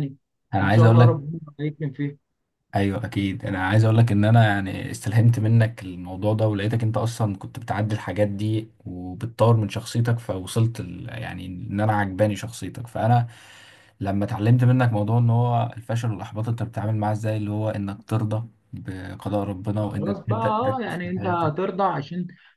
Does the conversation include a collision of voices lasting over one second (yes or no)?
yes